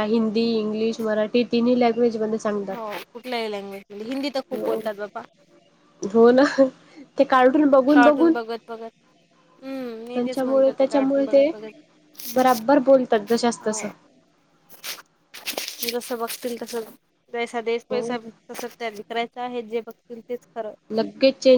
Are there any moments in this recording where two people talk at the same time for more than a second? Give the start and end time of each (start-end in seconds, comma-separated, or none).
10.1-11.5